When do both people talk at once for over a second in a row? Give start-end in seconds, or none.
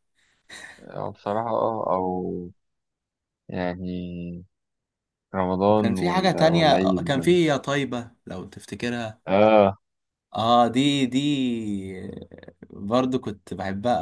5.7-7.1